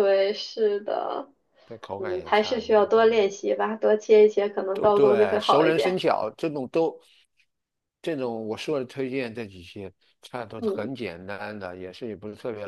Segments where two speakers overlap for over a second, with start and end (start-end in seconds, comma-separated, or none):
2.0-3.2, 4.7-6.0